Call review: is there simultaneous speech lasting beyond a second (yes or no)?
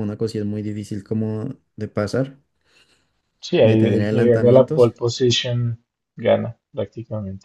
yes